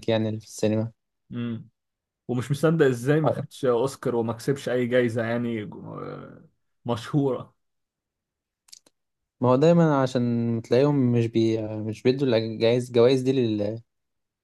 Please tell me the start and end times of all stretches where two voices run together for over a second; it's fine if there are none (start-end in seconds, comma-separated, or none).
none